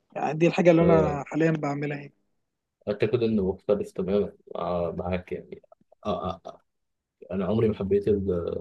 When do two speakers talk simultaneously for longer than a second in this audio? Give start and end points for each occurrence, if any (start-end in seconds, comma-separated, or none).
none